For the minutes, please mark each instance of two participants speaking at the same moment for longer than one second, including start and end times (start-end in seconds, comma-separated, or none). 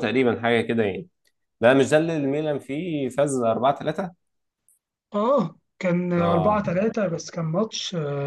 none